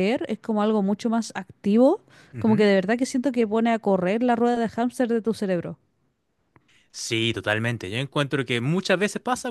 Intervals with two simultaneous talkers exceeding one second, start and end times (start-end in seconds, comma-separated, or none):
none